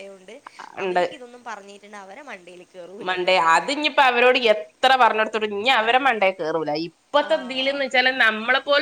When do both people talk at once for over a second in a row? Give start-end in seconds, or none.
none